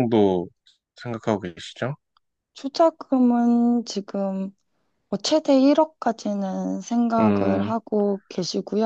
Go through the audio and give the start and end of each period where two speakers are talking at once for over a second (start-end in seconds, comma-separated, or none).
none